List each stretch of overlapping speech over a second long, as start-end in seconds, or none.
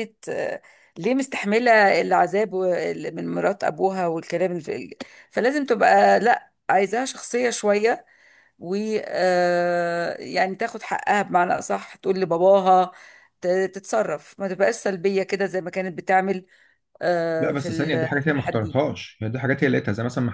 17.4-18.8